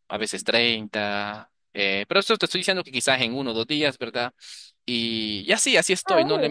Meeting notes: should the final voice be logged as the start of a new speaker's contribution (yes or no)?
no